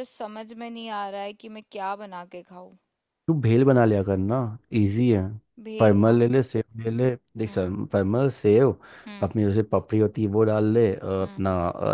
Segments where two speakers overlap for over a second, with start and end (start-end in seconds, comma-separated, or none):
none